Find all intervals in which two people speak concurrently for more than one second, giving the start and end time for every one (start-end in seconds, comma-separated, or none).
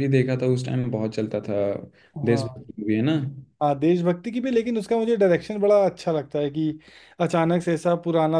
none